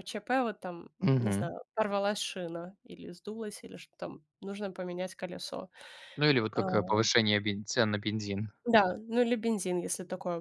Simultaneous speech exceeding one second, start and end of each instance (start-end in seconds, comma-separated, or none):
none